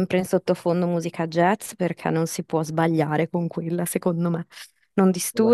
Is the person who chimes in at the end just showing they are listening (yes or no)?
yes